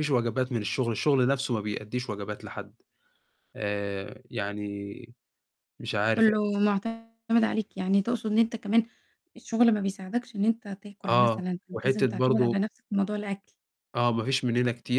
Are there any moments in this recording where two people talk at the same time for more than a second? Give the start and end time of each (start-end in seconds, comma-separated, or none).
11.1-12.6